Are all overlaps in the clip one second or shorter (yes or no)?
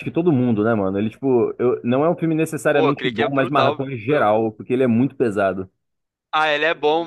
no